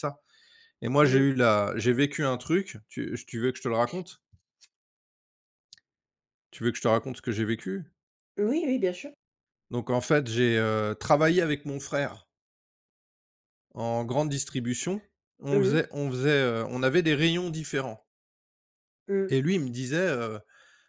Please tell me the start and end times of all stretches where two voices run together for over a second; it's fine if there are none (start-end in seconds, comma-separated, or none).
none